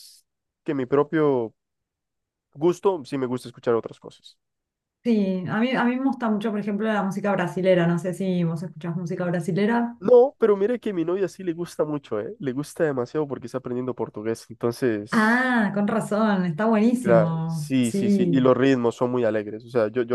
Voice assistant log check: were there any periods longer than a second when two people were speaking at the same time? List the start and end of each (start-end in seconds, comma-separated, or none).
17.0-18.4